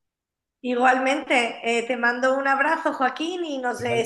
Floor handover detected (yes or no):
no